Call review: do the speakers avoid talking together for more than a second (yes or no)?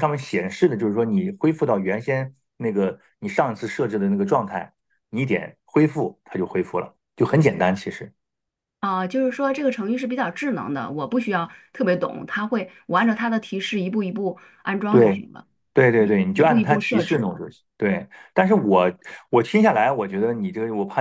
no